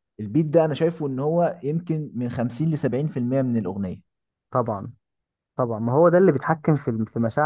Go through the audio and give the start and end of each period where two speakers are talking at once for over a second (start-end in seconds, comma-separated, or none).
none